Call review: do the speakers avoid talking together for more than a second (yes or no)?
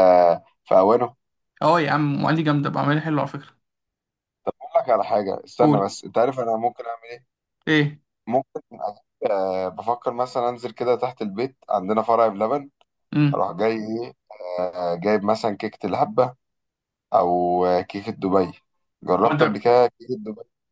yes